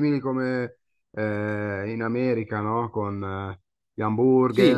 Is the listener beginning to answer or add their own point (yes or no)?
yes